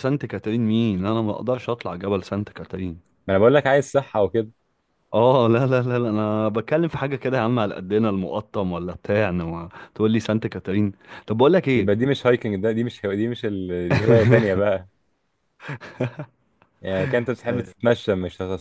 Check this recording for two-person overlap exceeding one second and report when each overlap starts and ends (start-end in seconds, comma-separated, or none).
none